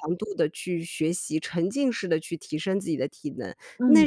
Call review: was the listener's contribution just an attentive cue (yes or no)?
yes